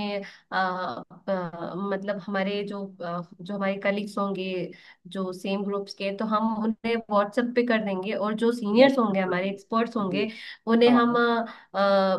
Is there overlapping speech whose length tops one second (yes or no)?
yes